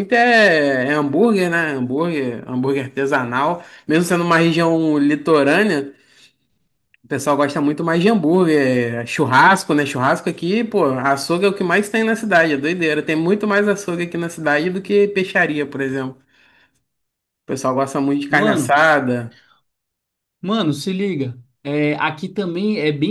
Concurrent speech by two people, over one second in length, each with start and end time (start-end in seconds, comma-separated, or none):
none